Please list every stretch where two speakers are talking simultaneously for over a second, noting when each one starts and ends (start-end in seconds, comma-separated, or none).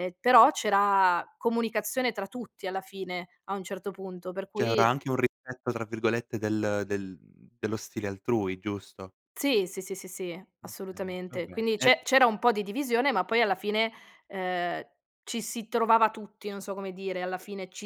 10.6-11.9